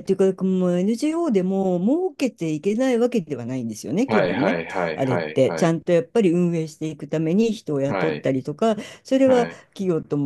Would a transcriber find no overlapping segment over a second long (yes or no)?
no